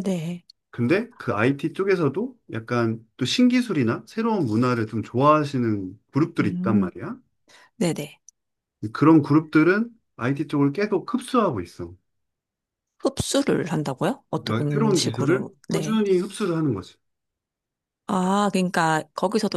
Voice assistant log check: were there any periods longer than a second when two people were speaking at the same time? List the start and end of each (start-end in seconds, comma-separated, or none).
14.4-16.0